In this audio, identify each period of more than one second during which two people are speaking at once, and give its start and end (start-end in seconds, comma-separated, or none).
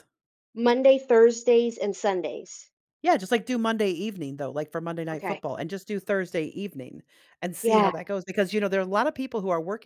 none